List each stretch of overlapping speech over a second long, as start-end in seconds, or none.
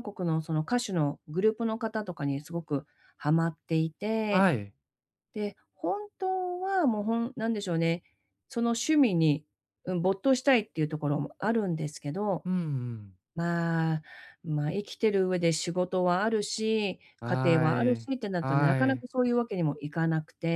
17.2-19.0